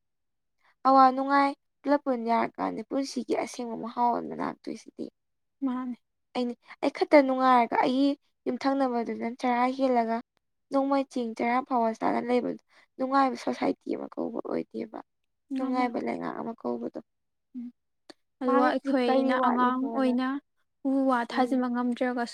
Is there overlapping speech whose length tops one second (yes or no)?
yes